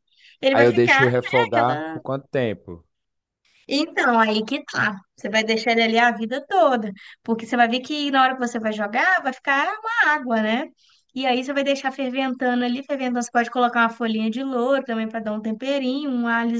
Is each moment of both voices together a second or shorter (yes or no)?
no